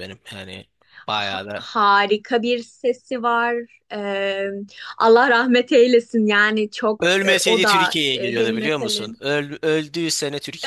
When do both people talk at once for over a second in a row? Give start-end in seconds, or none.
7.0-9.2